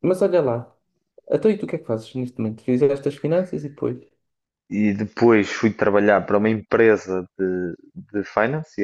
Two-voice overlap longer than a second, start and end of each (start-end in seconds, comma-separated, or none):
none